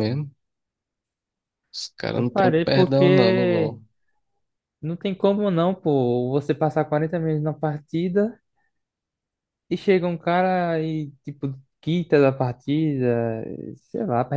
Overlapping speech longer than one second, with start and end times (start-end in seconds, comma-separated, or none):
2.1-3.8